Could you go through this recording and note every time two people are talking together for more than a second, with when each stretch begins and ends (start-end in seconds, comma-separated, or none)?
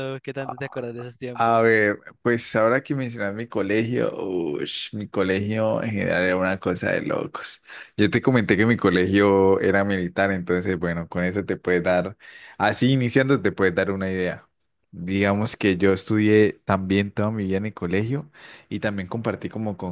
none